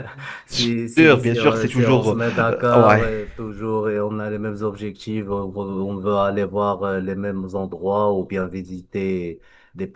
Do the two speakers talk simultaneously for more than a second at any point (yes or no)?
yes